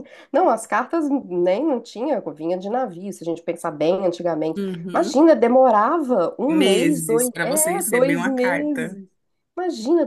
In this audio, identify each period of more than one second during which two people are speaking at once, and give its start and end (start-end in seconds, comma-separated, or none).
6.5-9.0